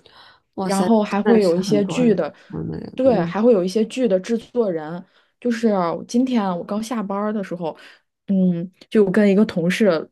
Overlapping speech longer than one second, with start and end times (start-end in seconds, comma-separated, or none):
0.6-2.3